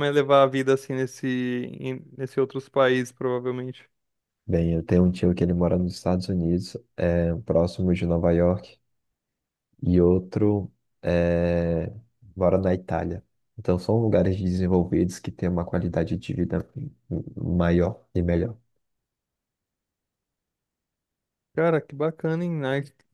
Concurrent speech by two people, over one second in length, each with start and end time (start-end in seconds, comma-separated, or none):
none